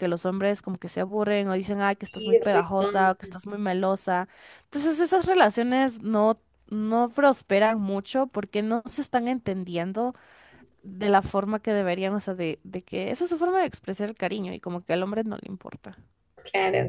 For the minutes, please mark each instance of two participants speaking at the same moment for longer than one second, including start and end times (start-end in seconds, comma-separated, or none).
2.0-3.3